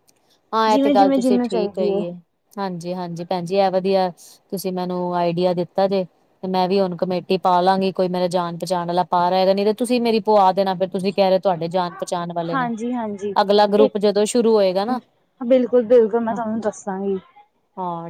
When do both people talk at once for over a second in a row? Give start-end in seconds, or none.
0.7-2.0